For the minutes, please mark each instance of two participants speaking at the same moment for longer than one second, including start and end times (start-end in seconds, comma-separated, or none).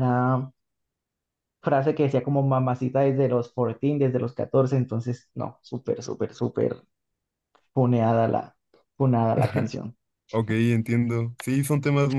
none